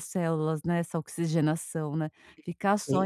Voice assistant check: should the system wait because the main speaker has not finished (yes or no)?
yes